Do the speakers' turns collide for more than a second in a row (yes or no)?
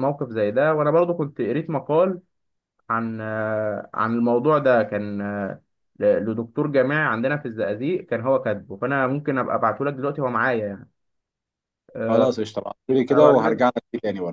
no